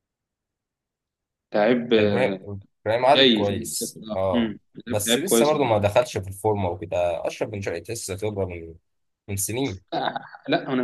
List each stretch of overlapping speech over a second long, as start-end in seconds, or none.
3.1-5.5